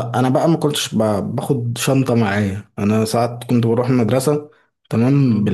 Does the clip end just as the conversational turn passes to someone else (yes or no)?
no